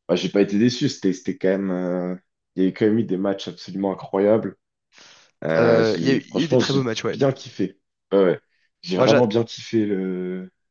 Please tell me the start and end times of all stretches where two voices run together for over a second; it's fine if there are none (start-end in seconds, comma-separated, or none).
5.6-7.2